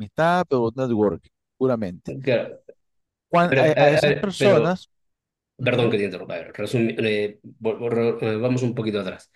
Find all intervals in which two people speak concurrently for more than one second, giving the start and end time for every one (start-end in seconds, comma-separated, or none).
3.5-4.8